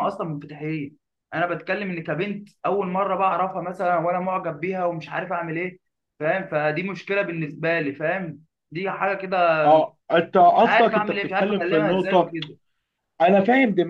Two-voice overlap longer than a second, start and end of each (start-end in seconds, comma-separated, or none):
10.5-12.3